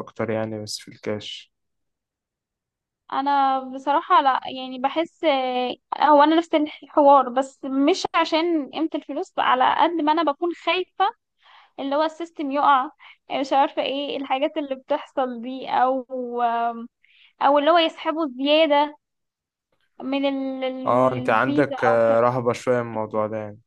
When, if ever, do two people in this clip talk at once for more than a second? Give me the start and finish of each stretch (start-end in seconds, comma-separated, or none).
20.9-22.3